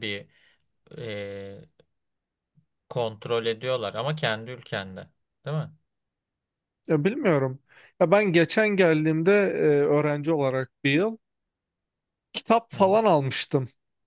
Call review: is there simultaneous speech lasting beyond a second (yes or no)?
no